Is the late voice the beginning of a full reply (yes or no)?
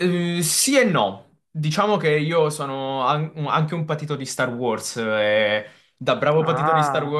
no